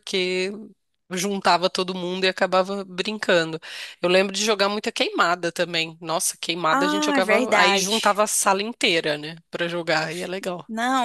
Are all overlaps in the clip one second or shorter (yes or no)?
no